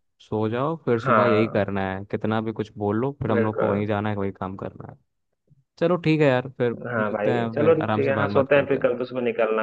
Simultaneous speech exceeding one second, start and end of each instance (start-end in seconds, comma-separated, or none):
6.9-9.0